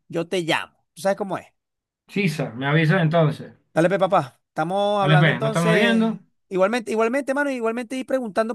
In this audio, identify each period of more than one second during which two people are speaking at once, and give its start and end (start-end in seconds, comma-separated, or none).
5.0-6.2